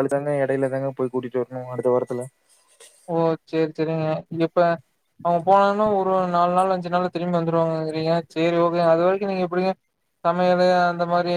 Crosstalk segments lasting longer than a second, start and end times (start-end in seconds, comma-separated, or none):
none